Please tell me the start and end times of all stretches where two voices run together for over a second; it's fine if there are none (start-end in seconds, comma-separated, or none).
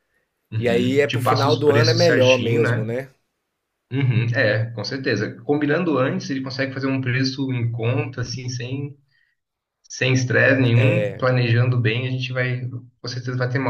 0.6-2.9